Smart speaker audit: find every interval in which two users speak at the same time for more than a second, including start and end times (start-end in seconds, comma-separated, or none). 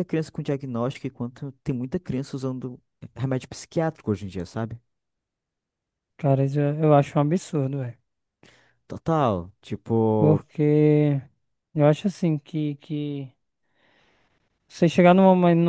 none